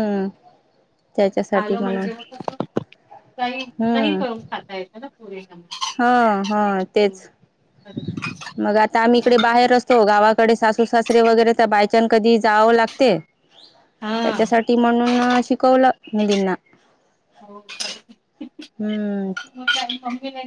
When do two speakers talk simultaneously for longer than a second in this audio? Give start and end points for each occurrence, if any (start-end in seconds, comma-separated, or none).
none